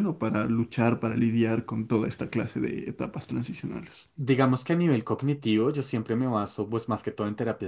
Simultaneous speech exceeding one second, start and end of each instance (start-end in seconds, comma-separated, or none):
none